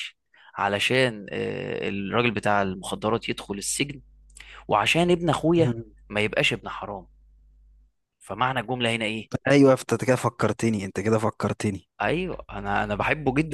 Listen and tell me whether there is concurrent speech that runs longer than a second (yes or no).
no